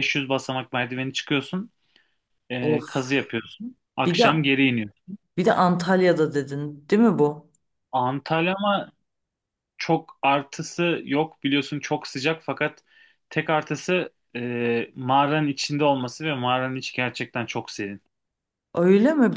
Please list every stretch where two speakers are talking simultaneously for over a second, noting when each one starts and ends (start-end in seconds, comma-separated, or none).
none